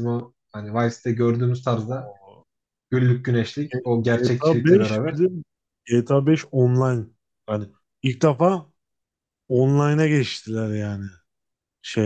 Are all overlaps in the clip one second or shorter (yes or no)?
no